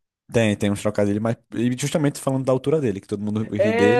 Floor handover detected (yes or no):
yes